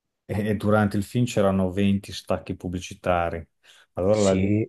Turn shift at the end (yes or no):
no